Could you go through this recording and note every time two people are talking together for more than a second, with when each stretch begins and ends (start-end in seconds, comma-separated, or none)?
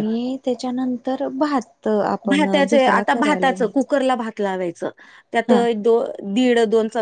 2.3-3.9